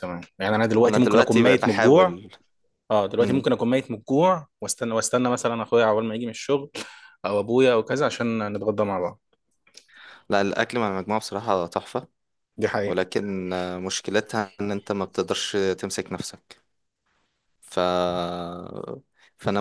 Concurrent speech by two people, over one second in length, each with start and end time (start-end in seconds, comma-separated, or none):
0.9-2.2